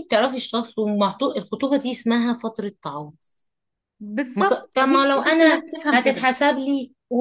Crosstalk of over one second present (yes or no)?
yes